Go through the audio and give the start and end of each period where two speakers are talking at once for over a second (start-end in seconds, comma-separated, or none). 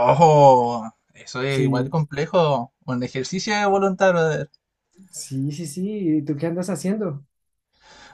none